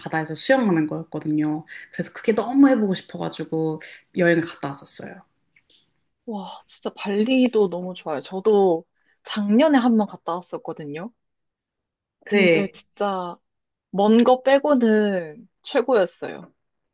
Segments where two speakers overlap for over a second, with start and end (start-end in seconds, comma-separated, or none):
none